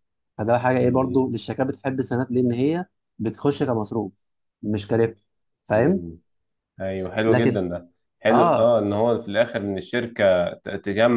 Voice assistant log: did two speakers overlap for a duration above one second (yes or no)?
no